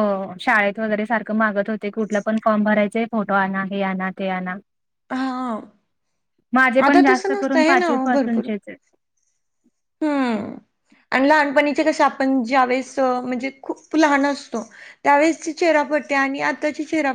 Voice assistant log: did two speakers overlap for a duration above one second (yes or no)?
yes